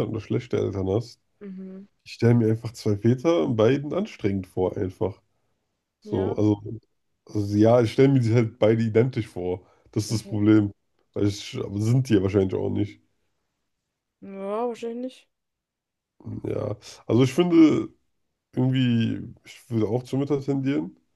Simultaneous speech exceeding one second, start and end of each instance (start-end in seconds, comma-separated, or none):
none